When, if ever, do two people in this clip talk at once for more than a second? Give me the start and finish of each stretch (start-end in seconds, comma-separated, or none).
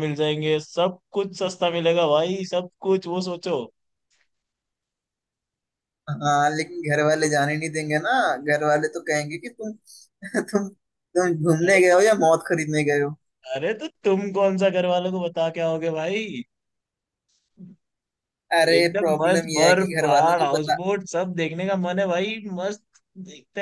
18.8-20.8